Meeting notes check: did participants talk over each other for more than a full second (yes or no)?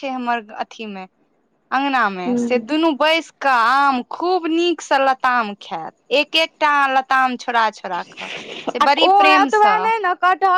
no